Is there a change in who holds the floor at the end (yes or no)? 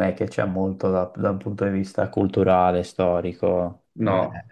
yes